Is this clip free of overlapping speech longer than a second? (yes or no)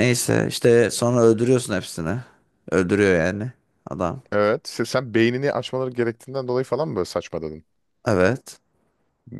yes